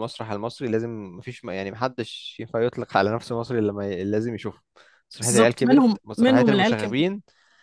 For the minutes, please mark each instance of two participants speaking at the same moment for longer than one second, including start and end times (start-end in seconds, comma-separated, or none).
5.2-7.0